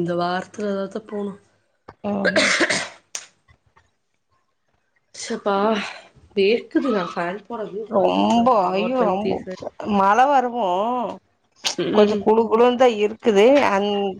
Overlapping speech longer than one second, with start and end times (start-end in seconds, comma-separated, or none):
8.0-9.6